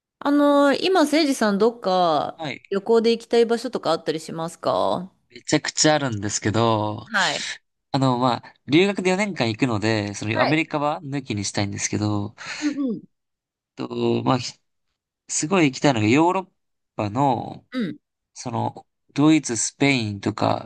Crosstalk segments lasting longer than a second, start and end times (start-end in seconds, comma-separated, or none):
none